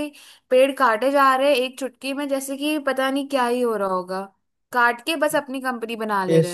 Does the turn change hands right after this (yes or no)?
yes